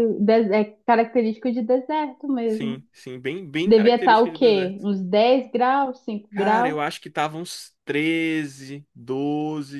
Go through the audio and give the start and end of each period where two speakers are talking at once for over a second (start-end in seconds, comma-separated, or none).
3.6-4.9